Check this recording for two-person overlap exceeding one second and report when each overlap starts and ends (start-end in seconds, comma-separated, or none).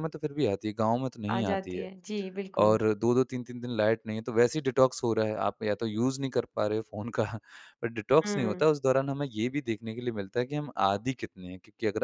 none